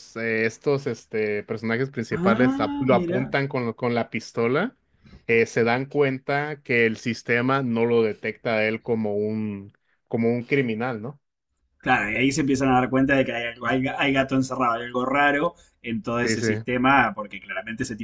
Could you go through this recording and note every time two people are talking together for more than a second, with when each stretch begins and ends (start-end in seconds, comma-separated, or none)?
2.1-3.3